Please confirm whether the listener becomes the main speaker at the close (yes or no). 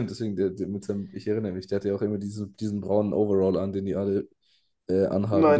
yes